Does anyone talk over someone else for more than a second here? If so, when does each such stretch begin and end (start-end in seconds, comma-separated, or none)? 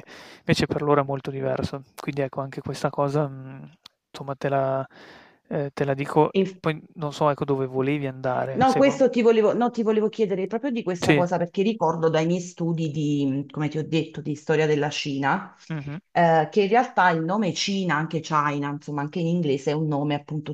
none